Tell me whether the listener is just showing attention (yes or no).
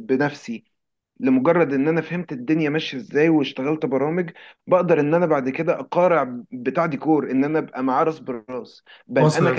yes